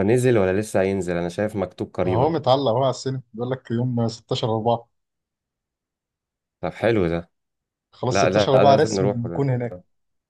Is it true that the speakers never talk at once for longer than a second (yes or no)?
no